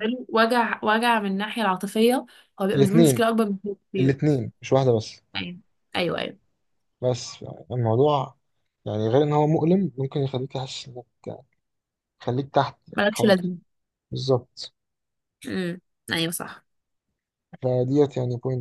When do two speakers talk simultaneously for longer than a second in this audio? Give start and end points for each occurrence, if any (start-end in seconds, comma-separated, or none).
none